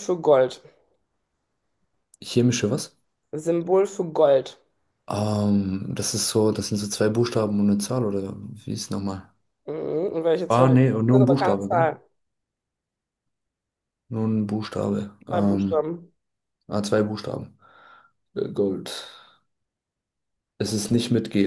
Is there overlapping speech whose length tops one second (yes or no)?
yes